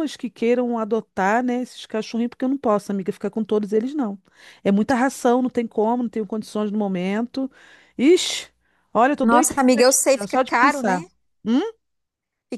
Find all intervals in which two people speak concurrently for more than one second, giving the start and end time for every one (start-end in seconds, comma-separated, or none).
9.2-11.0